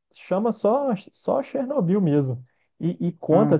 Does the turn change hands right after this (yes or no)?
no